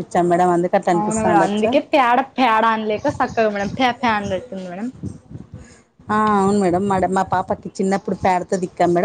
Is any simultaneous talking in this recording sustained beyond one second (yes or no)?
no